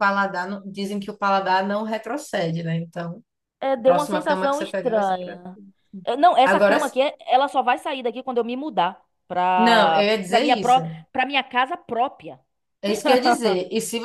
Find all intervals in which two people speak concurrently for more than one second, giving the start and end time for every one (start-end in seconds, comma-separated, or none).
3.8-5.5, 9.6-10.8